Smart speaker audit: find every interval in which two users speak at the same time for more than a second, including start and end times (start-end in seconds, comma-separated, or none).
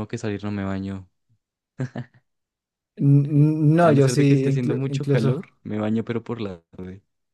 3.8-5.5